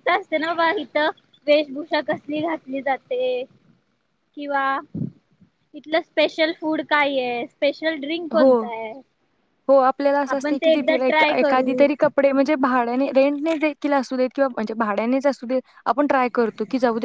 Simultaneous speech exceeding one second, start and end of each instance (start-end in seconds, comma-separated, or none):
none